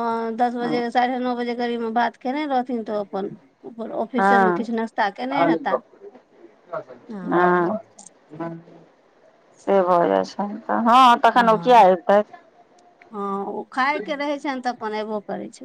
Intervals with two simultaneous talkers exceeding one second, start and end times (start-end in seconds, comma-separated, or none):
none